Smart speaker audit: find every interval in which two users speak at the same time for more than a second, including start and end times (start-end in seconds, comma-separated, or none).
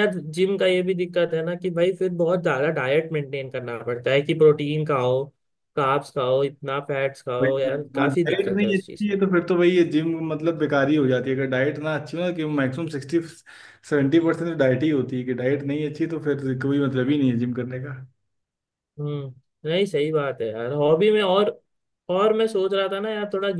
7.4-9.2